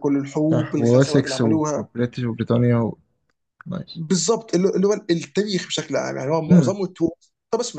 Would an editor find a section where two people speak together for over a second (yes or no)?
yes